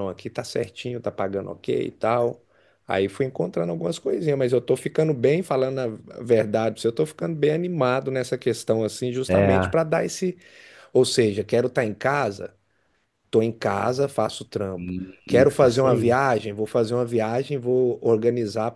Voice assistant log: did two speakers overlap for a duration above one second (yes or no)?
yes